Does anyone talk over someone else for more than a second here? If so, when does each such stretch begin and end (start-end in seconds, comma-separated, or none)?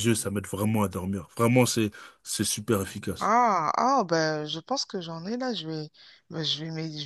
none